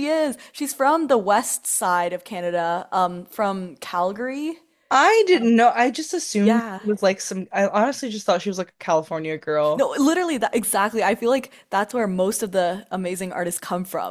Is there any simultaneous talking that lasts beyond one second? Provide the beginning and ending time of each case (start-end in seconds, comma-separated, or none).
none